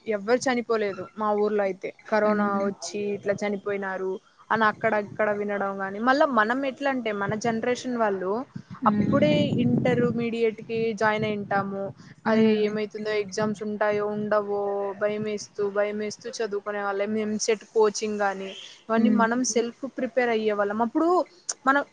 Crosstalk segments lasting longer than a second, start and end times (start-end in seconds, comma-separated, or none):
none